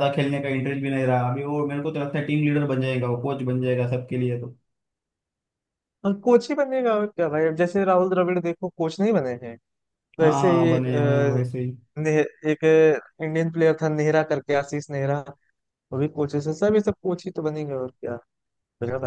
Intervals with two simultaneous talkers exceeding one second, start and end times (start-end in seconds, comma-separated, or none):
none